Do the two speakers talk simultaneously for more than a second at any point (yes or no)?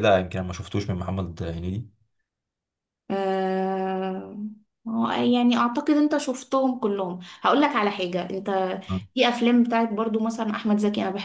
no